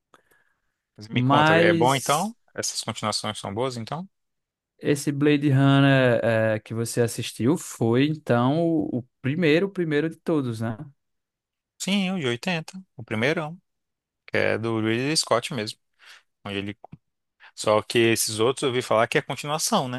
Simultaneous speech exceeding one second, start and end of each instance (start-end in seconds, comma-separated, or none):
1.1-2.3